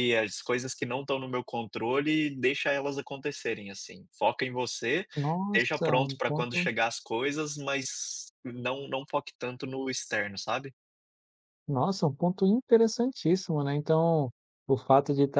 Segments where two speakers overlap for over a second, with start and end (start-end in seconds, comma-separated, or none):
5.5-6.7